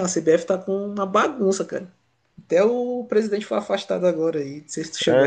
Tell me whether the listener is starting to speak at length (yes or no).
yes